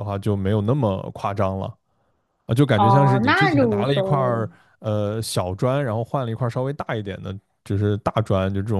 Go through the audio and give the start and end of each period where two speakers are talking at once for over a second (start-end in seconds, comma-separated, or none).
2.7-4.5